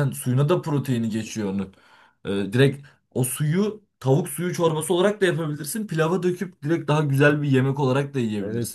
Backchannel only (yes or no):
no